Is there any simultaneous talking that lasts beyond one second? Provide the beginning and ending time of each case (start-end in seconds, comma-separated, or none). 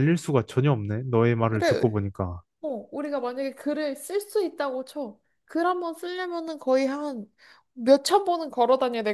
none